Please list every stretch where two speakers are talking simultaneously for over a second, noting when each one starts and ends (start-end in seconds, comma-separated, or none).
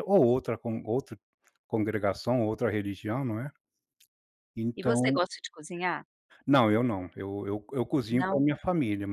none